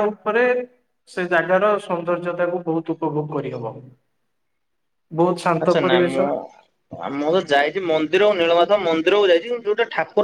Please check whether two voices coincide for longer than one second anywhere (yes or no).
no